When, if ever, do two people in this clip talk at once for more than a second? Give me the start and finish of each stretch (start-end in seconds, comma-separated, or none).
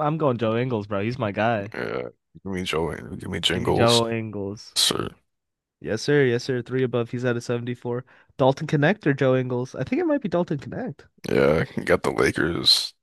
none